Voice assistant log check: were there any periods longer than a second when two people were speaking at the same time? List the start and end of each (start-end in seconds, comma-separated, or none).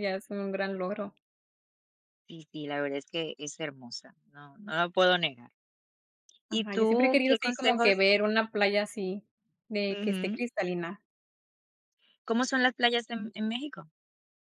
6.5-8.0